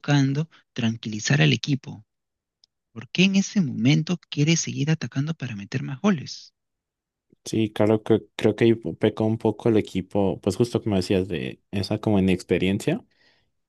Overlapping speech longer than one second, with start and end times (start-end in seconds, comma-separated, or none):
none